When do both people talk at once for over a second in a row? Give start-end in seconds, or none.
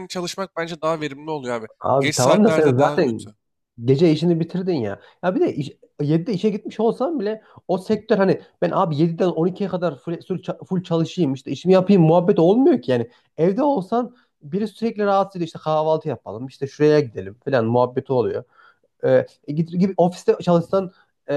1.8-3.3